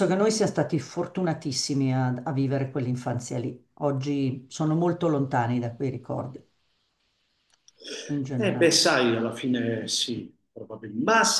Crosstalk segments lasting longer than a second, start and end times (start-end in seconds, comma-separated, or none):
none